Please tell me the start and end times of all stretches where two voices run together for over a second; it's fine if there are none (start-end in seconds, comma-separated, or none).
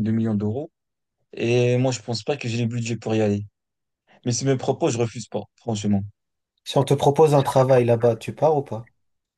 none